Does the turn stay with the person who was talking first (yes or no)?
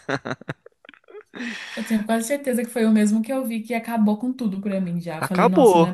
no